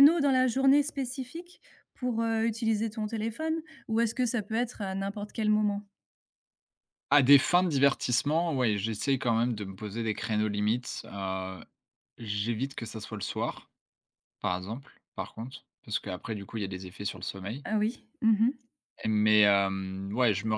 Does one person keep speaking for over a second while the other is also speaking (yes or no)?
no